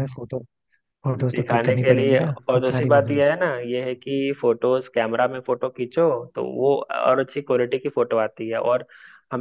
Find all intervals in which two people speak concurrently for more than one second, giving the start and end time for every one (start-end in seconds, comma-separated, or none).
1.3-3.2